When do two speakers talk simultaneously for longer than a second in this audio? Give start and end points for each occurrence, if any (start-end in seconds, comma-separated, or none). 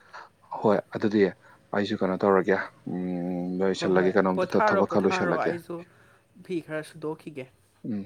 3.8-5.5